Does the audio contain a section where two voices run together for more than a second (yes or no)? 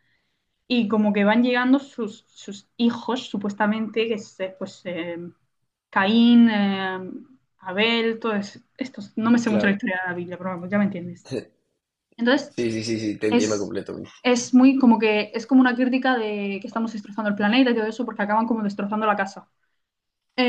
no